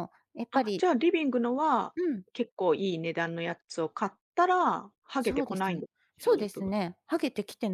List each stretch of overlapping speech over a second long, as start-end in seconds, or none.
5.2-6.7